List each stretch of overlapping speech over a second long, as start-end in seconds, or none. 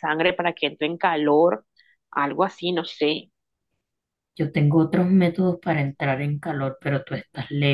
none